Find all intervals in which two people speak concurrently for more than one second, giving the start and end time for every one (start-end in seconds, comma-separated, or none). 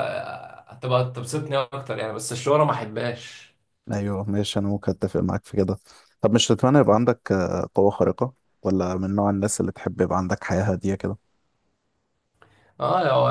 none